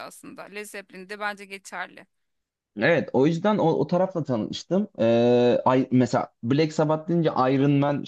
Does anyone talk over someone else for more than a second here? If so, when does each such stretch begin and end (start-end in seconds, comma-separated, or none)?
none